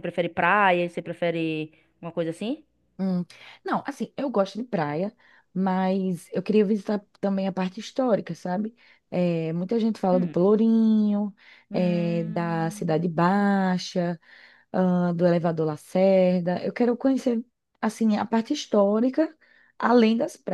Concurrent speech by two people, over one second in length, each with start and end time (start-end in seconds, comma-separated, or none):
11.7-13.0